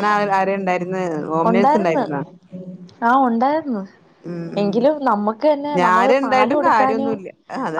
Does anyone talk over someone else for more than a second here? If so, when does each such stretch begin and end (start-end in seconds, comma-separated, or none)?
4.6-7.1